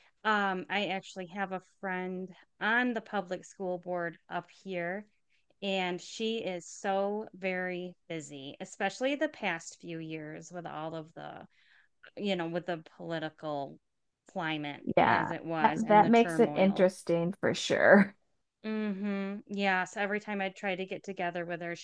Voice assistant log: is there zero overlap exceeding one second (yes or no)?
no